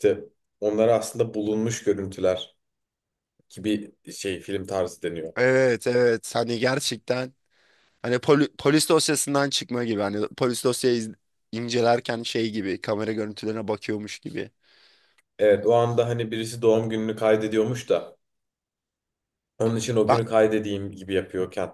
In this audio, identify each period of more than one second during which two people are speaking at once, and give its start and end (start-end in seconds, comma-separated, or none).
none